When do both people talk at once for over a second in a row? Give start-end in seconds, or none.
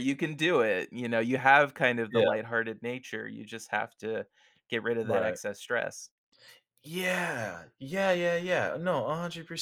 none